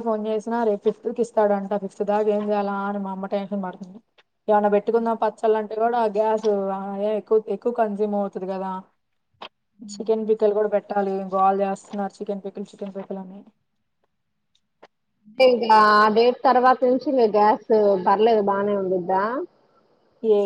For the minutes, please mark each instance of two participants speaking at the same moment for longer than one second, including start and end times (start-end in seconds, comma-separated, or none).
none